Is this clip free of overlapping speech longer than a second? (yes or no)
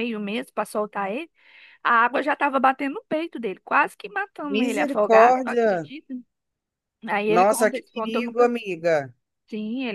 no